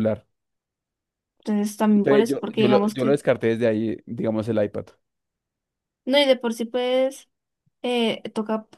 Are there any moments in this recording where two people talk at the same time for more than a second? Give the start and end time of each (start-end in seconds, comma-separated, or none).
1.9-3.2